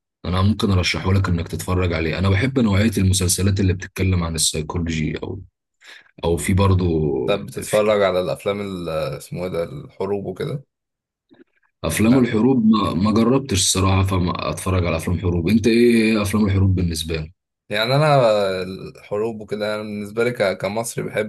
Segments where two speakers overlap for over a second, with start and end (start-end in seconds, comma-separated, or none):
none